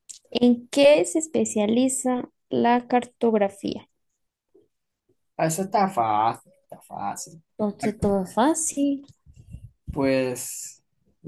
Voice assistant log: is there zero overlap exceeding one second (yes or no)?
yes